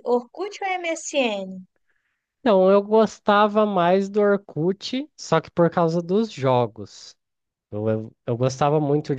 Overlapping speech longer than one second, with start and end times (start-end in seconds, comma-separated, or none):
none